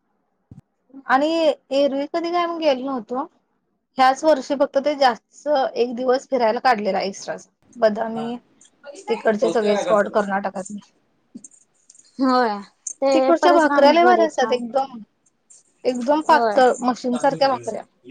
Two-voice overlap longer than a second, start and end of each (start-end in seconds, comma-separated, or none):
13.1-14.6